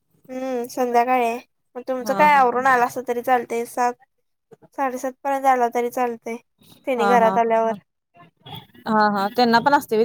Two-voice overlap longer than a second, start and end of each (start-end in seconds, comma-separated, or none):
none